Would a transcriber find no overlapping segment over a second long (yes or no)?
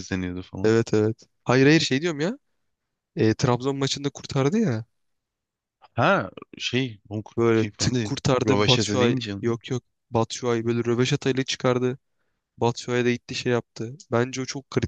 no